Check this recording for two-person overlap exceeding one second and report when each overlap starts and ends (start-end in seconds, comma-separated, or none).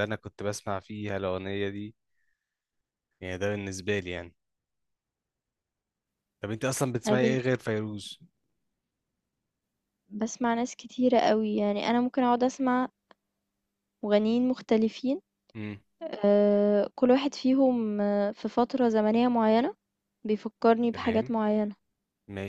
none